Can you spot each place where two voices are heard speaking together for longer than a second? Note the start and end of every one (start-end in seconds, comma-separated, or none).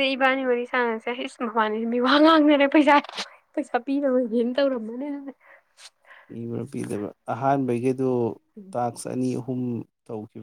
none